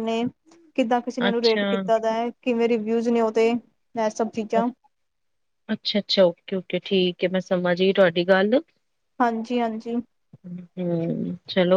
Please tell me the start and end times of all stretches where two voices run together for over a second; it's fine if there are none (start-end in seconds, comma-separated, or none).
none